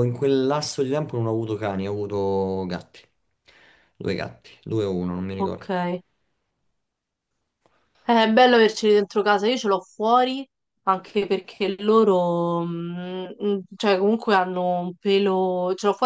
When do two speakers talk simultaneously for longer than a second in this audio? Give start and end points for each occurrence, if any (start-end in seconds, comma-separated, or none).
none